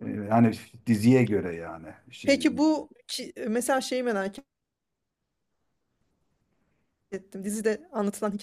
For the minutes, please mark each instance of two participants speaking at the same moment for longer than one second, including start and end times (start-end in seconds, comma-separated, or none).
none